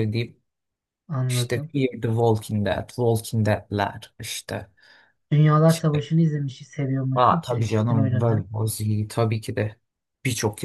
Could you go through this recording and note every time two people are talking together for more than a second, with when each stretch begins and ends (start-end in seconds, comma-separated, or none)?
7.1-8.5